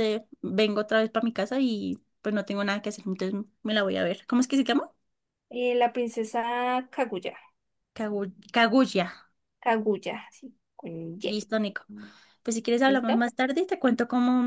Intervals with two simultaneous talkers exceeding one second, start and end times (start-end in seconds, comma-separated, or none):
none